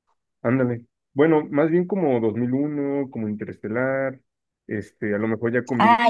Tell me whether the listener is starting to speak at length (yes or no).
yes